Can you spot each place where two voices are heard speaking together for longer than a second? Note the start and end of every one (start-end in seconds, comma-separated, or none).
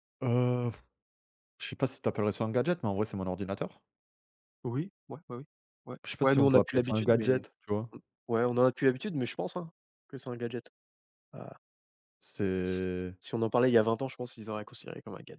6.0-7.4